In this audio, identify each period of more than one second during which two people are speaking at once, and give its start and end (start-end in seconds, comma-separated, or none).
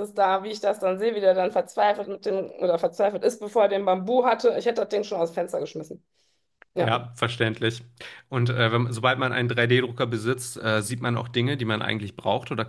none